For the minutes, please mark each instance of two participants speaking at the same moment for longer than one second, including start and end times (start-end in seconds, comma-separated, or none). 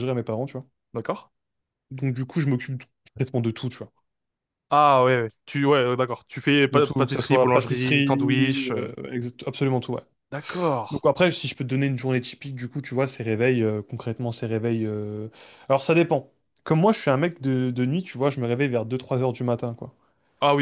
6.7-8.9